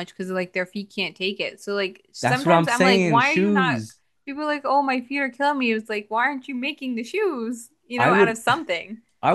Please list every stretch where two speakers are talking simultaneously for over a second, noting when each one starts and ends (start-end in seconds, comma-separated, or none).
2.2-3.8